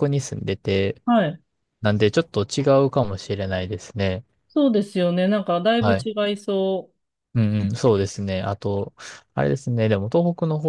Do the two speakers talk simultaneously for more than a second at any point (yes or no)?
no